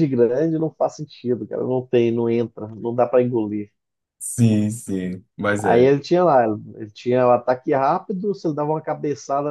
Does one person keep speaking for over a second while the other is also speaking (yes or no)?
no